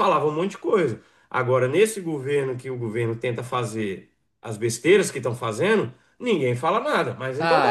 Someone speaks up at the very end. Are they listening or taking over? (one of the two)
taking over